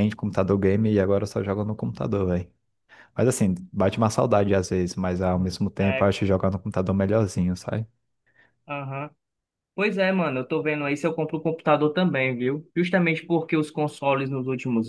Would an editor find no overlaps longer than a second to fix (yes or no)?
yes